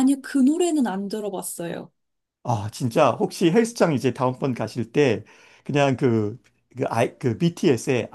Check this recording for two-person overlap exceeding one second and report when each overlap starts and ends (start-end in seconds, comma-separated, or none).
none